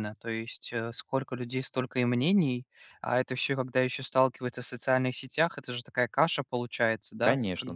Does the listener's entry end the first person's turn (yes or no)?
yes